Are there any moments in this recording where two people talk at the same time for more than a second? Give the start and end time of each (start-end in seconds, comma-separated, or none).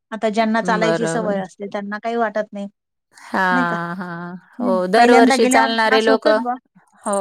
4.6-6.3